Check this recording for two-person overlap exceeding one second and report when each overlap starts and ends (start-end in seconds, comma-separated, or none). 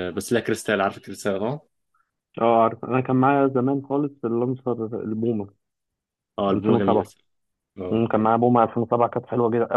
none